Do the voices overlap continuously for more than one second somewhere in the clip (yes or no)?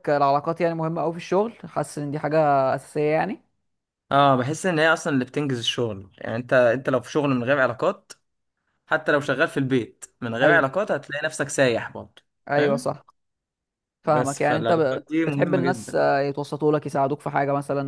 yes